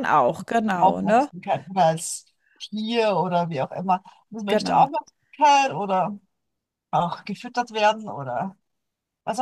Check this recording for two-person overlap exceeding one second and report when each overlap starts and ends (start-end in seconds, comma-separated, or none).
none